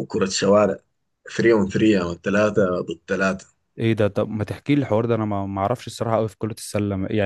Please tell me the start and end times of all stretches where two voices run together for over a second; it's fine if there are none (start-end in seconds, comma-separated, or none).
none